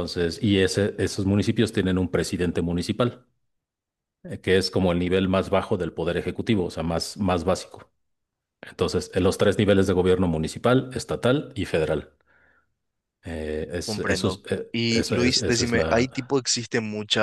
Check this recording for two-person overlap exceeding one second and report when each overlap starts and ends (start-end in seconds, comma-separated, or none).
13.8-16.1